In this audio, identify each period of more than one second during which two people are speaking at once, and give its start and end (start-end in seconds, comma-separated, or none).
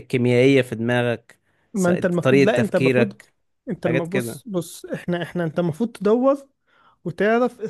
1.7-3.2